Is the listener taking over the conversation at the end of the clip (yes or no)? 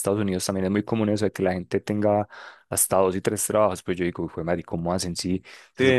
no